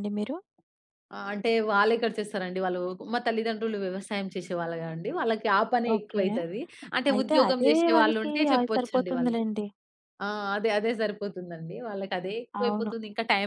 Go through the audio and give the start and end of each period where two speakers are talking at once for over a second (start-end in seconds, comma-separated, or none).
7.1-9.4